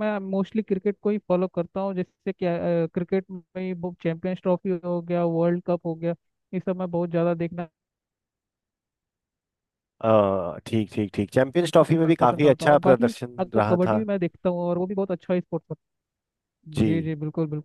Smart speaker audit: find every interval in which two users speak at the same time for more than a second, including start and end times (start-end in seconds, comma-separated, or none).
12.2-14.0